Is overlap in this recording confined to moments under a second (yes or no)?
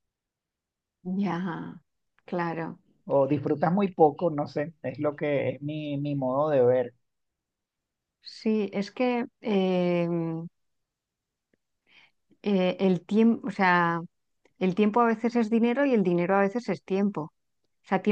yes